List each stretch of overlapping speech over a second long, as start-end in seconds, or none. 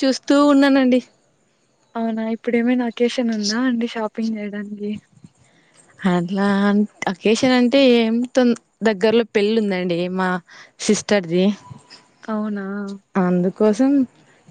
none